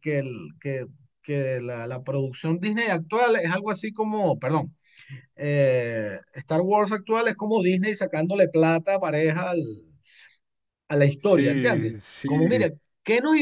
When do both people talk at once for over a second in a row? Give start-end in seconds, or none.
11.2-12.7